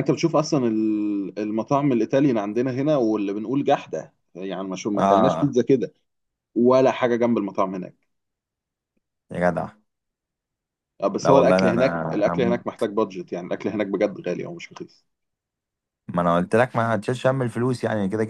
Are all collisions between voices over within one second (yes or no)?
no